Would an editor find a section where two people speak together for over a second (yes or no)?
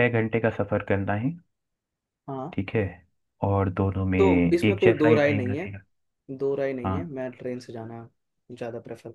yes